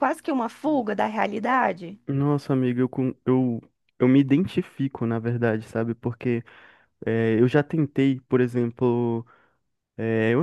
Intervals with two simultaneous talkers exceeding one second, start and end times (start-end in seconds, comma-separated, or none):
none